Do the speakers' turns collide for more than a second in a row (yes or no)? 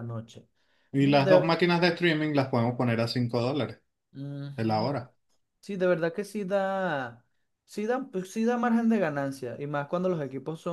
no